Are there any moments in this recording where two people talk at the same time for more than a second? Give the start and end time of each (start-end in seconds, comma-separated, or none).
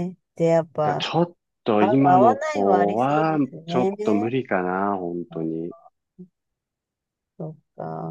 1.8-4.4